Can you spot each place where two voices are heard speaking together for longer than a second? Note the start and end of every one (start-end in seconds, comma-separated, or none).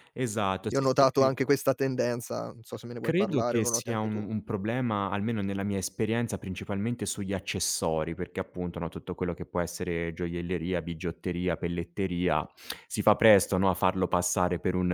3.0-4.3